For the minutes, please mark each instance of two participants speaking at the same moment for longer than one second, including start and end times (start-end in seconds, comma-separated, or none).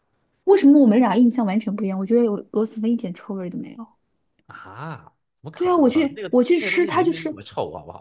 5.5-7.4